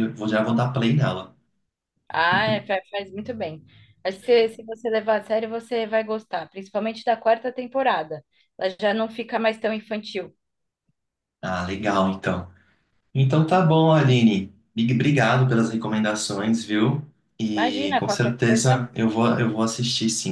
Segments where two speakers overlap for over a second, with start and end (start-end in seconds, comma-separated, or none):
17.5-18.9